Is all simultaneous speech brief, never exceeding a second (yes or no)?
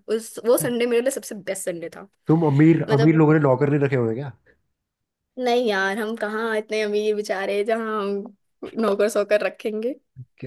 yes